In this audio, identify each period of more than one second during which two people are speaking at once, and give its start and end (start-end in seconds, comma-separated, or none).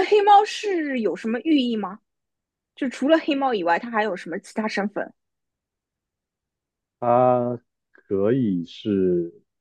none